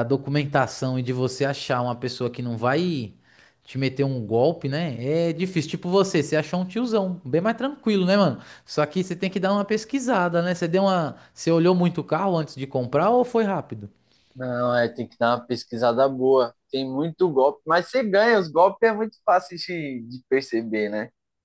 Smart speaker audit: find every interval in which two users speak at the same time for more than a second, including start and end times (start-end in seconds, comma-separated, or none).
none